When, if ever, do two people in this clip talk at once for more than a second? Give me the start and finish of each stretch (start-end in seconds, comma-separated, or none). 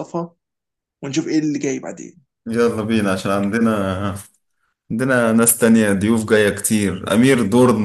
none